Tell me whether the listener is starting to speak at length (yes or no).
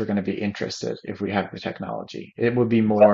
no